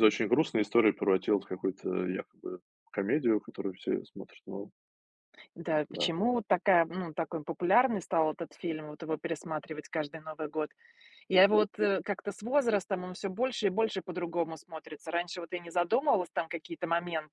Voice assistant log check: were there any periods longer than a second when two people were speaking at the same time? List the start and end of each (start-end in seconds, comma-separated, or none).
none